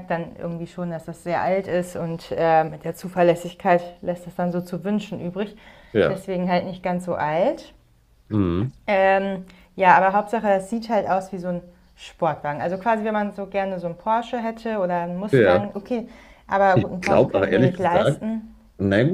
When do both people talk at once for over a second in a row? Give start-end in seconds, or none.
16.7-18.2